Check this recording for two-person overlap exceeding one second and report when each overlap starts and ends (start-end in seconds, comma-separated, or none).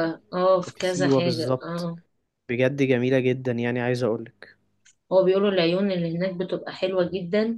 0.7-1.9